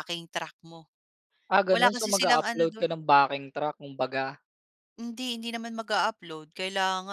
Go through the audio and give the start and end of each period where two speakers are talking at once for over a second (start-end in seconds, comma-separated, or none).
1.7-2.9